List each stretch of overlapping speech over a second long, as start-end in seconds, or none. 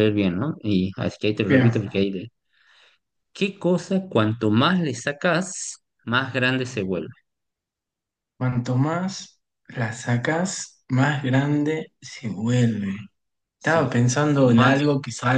13.6-14.8